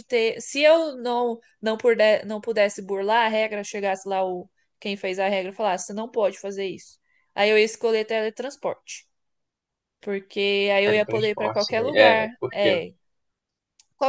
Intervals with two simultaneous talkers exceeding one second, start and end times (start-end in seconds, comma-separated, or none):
10.8-12.8